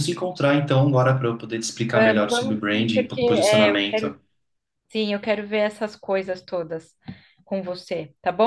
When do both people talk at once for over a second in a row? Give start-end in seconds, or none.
1.9-4.2